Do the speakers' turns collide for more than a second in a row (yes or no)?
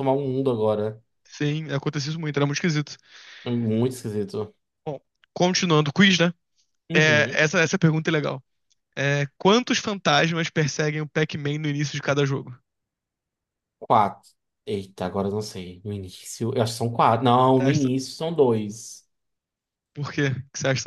no